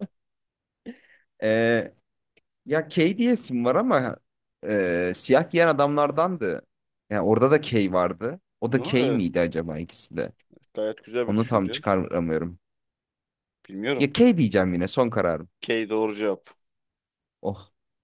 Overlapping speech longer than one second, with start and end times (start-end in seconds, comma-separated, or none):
none